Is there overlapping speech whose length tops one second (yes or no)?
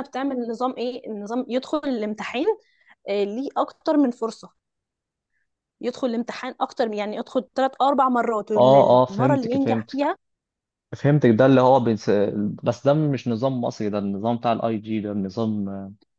yes